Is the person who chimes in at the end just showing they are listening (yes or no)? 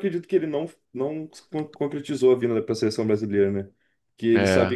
yes